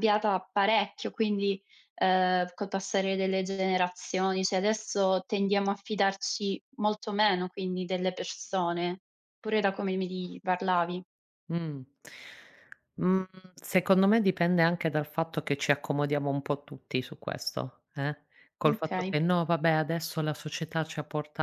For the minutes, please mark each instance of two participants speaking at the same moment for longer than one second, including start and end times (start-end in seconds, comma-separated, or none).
none